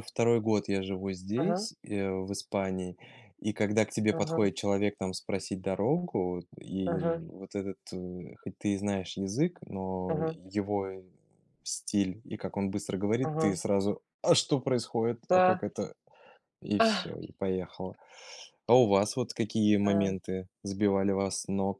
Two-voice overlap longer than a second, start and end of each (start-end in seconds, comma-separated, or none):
none